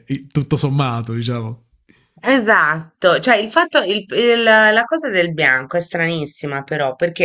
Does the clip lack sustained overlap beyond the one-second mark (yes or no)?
yes